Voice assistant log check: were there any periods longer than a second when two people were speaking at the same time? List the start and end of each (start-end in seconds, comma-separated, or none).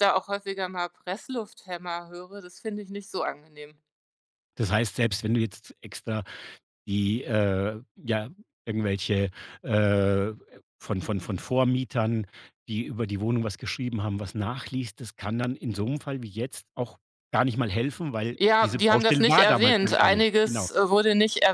18.4-20.7